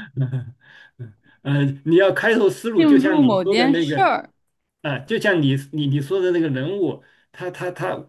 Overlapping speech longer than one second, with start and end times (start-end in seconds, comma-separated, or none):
2.8-4.1